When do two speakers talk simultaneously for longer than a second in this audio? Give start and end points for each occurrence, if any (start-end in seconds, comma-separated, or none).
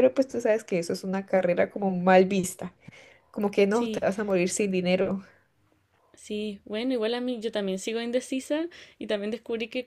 none